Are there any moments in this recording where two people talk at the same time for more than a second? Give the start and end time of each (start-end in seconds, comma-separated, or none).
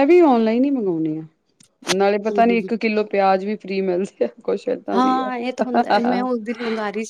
none